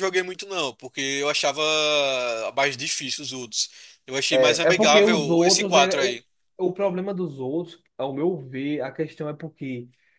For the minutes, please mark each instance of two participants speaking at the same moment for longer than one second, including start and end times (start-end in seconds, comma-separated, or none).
4.6-6.2